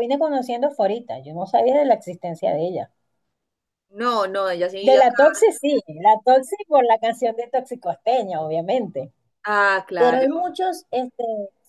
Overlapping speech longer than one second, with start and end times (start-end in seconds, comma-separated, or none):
none